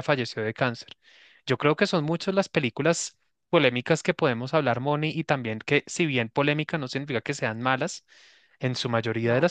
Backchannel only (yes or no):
yes